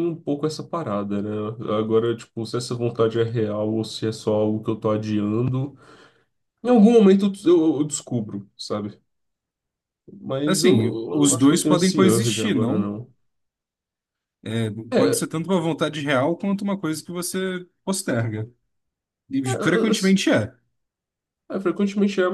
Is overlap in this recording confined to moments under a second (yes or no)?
no